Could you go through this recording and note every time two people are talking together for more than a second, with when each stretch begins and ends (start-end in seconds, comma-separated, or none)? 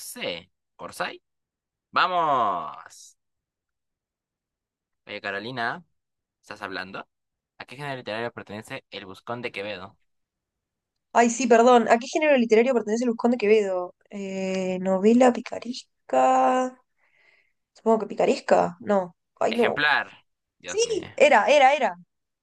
none